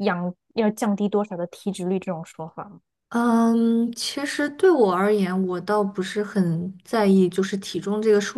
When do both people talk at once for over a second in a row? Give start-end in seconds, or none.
none